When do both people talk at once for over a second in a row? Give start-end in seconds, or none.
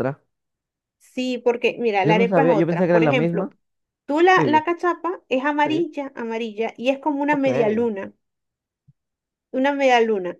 2.0-3.5